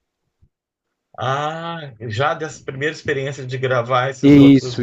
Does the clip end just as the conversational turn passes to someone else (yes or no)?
yes